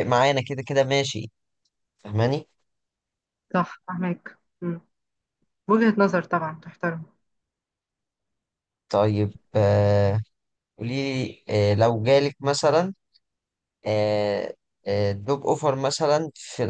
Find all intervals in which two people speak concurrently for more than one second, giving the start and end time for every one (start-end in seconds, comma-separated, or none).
none